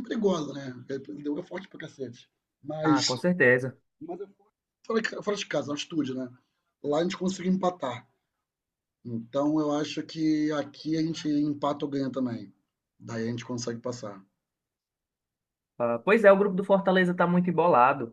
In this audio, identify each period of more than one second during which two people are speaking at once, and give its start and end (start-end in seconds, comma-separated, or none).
none